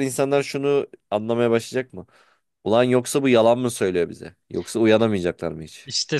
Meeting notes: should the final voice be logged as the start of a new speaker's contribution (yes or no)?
yes